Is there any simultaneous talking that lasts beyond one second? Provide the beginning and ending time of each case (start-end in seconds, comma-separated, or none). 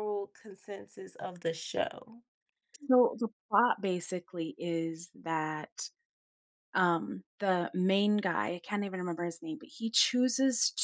none